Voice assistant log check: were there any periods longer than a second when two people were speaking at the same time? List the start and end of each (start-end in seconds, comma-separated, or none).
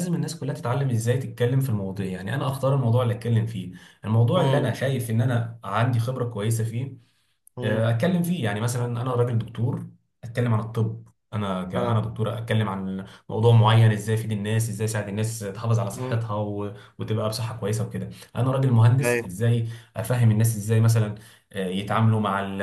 none